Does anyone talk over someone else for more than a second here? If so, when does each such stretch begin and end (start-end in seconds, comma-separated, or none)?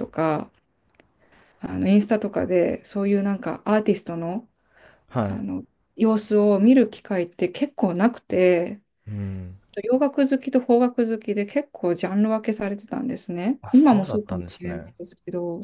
13.6-14.9